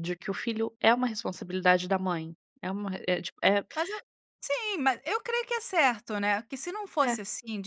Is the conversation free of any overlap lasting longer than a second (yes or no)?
yes